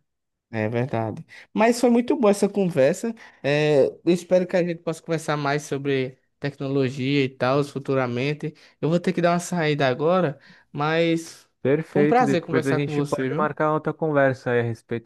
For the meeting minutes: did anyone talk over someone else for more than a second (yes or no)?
yes